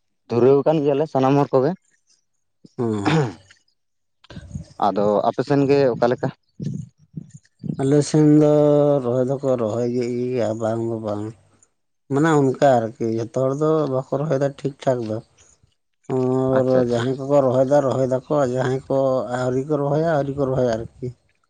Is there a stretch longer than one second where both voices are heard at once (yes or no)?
no